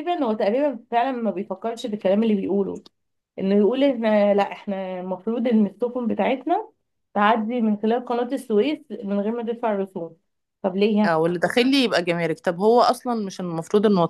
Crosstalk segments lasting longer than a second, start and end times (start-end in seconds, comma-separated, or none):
none